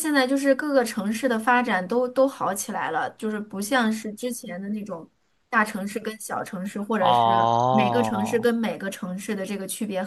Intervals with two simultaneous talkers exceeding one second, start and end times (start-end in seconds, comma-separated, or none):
7.0-8.5